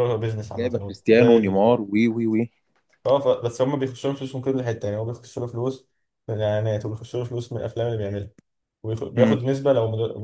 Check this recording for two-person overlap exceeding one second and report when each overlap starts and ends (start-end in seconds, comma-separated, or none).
0.6-1.8